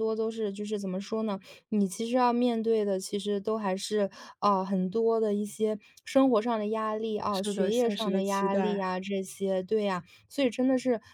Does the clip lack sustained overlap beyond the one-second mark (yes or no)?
no